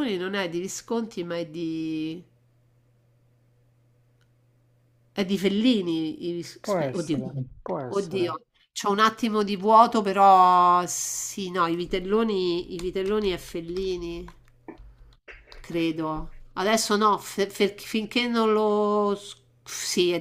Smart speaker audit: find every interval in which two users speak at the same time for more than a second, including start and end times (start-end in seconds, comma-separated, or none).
none